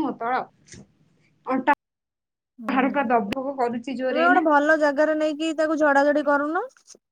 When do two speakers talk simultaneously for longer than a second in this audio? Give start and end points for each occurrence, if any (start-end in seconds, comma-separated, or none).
2.8-4.4